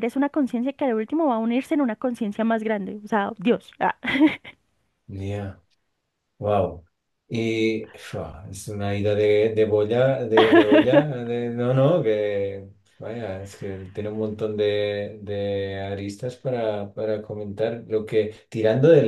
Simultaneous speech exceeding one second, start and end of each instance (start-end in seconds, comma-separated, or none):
none